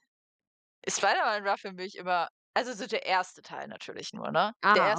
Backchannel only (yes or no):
yes